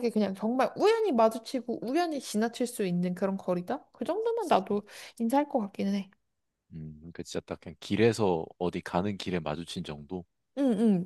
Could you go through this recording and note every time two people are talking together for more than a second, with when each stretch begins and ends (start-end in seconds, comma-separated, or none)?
none